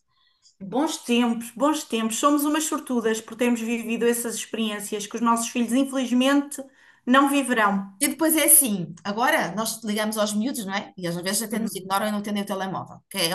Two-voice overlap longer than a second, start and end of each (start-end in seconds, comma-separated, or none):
none